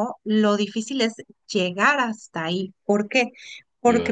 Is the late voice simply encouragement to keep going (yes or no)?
yes